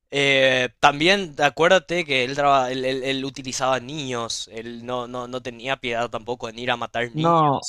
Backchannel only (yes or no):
no